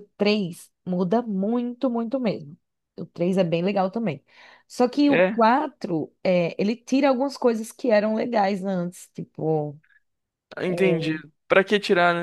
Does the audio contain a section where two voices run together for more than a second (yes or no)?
no